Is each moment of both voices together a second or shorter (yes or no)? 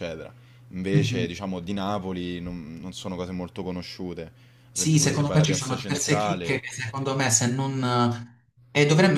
no